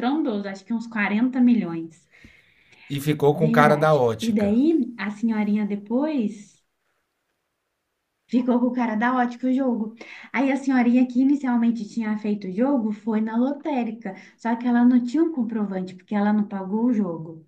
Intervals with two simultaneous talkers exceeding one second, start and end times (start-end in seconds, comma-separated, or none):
3.3-4.5